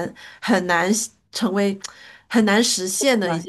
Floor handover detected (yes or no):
yes